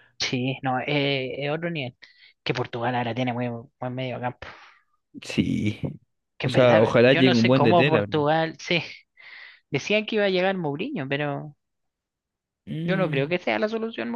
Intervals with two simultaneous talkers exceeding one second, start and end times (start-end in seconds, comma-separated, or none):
6.4-8.2